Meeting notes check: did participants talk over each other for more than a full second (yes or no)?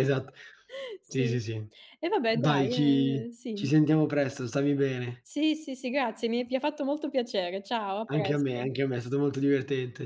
yes